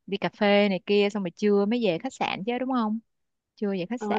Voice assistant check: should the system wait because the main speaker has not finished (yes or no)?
no